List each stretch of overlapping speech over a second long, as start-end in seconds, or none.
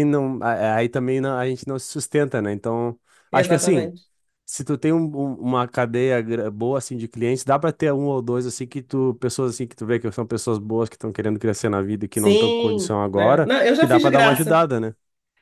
12.1-14.6